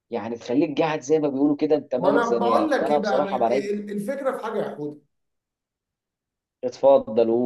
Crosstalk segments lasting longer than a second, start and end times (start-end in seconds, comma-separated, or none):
2.0-3.7